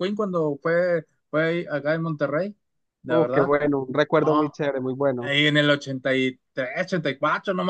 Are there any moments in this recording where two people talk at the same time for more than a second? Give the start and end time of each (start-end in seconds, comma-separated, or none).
none